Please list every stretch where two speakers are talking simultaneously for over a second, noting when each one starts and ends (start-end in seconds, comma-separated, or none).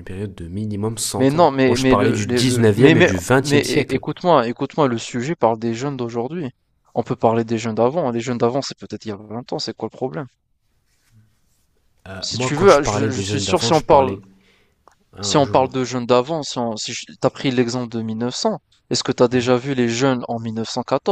1.1-4.0, 12.2-14.2